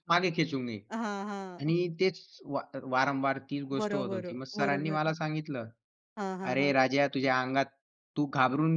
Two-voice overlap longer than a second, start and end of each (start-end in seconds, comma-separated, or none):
3.8-5.2